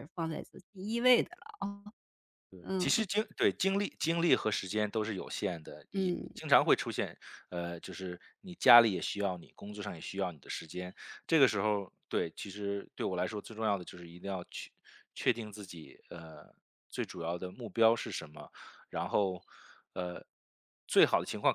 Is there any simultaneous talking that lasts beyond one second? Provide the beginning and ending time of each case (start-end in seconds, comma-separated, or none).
none